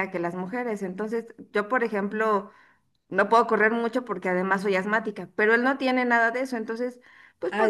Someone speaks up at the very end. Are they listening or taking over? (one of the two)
taking over